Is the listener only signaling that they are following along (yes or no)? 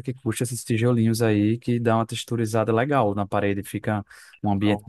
yes